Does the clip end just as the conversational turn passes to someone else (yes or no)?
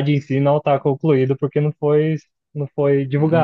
yes